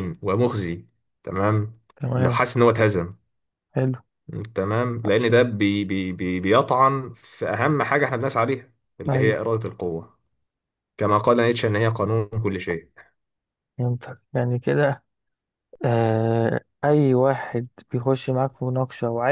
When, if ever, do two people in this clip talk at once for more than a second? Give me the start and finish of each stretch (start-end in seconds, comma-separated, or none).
none